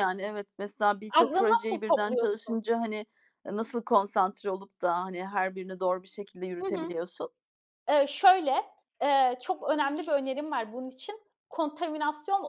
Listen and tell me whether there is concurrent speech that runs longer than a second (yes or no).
yes